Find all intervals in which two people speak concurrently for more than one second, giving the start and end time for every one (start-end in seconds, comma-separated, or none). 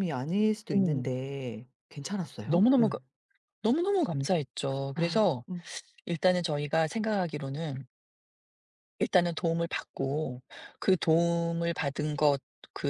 none